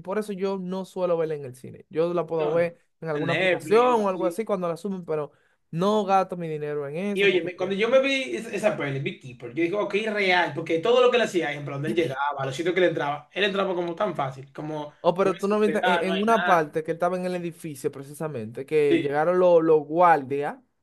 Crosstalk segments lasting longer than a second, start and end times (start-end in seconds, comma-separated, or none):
2.4-4.4, 15.1-16.6